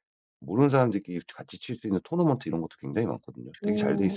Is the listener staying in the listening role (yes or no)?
no